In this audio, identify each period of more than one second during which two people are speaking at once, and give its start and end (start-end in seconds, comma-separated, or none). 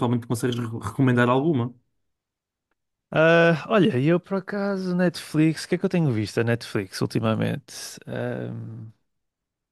none